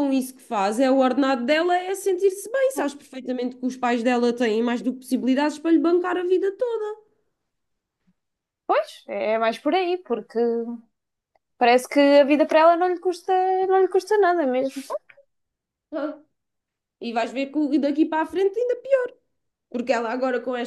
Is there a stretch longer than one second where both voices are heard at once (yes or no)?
no